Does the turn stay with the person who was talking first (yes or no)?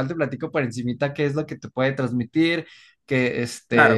yes